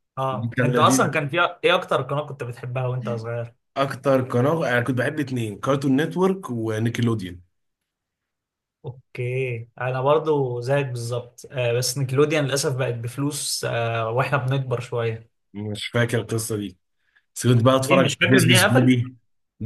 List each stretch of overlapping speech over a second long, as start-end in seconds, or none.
17.8-19.0